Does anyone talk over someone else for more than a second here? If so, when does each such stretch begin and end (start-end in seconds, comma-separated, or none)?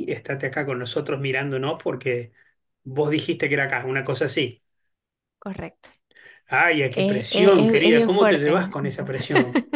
6.9-8.8